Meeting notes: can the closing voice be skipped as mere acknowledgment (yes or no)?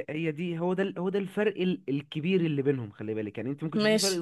yes